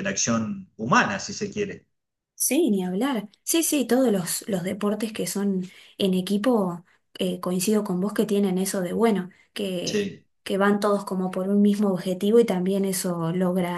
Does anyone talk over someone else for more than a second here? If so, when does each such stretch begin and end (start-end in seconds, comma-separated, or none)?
none